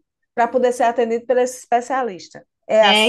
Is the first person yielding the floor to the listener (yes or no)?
yes